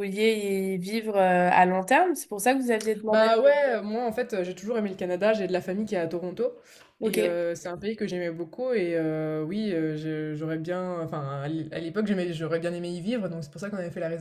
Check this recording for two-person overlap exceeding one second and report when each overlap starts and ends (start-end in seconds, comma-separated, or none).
none